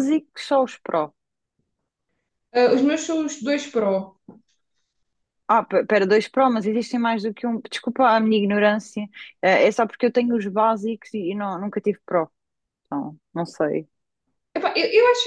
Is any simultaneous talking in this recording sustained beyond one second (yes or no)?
no